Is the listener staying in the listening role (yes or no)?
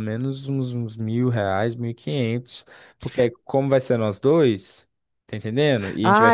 no